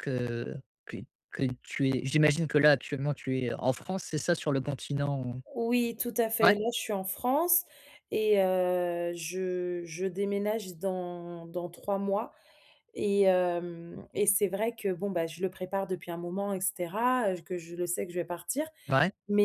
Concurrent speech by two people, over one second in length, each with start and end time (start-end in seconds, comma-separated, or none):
none